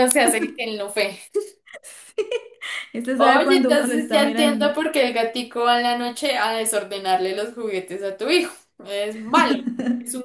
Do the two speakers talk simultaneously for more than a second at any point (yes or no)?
yes